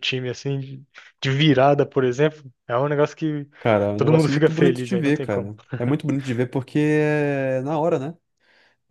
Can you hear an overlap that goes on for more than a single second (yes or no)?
yes